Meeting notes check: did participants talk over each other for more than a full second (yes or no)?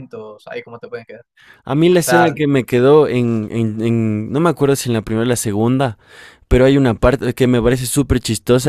no